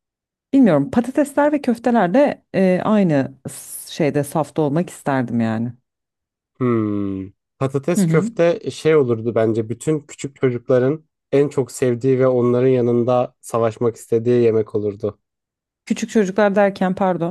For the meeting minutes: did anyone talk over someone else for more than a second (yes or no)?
no